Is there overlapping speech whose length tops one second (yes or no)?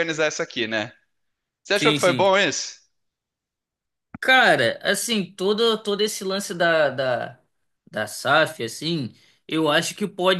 no